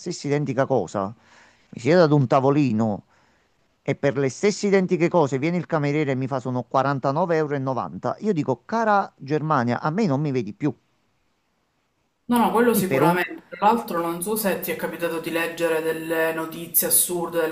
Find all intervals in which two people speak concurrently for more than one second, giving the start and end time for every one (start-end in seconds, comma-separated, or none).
none